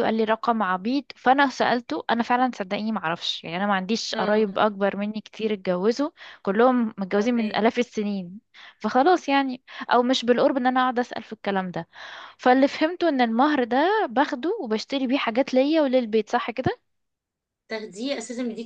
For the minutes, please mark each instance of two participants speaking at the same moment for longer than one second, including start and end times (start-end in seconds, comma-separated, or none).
none